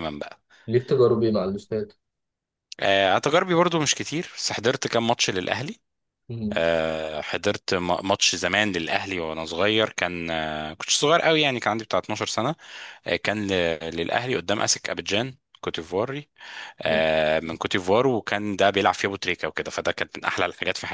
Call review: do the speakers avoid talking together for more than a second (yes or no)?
yes